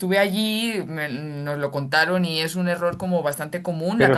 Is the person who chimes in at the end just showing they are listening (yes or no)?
no